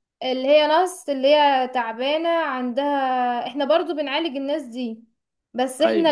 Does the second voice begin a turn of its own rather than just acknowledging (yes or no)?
no